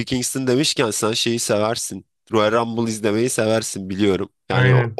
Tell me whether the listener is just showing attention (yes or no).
yes